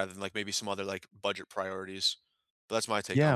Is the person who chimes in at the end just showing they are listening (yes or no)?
no